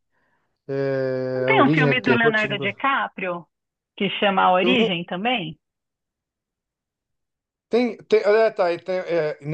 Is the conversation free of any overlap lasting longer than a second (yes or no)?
no